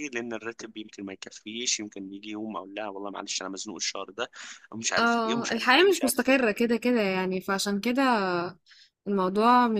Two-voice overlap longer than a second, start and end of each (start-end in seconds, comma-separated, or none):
5.0-6.3